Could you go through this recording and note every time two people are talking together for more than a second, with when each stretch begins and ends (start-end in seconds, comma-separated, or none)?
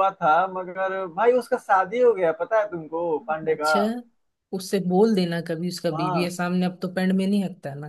none